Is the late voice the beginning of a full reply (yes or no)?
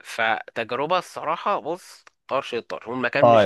yes